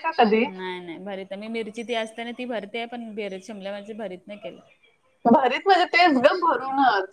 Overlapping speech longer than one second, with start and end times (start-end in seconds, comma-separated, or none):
none